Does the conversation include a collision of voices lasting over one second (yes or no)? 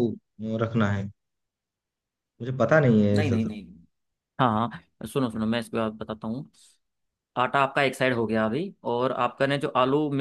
no